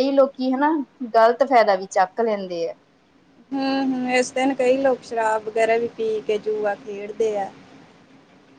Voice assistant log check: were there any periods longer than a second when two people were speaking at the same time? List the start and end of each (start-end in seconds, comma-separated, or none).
none